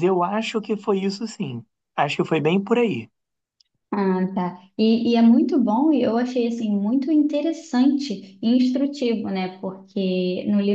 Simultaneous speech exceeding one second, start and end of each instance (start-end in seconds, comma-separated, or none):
none